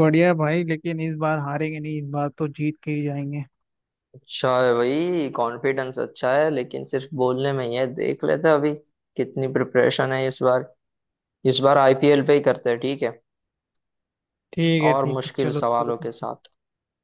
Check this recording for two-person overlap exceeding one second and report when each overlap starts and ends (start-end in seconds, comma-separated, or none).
14.9-16.3